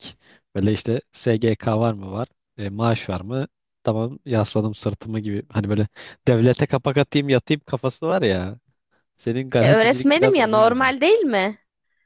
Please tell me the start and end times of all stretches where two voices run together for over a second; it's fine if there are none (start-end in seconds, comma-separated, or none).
9.6-10.9